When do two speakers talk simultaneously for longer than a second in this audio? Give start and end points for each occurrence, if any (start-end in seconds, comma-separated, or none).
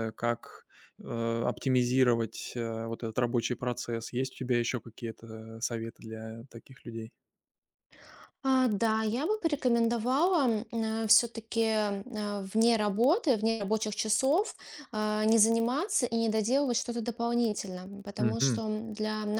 none